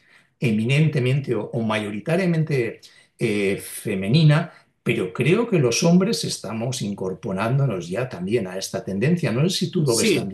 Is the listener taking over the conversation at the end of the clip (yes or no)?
yes